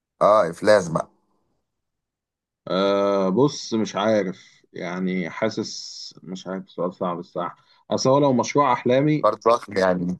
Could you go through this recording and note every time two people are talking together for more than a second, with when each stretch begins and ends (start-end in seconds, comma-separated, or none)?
none